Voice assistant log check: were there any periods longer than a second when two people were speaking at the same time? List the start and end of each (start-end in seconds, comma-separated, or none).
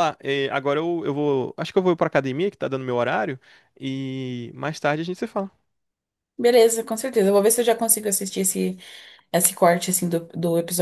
none